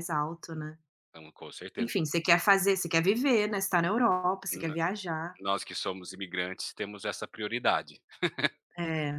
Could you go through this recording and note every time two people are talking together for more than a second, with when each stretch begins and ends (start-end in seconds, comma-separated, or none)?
none